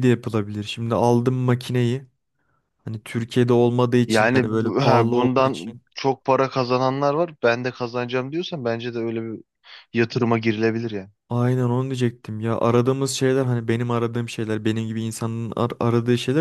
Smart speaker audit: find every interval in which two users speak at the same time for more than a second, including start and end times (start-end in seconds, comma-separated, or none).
4.1-5.8